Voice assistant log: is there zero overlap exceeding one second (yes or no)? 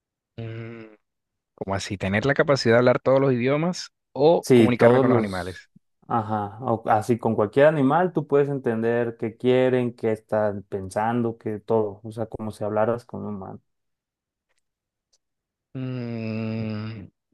no